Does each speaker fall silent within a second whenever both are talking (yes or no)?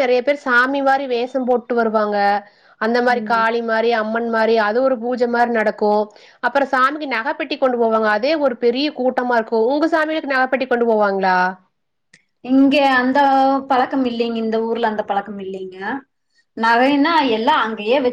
yes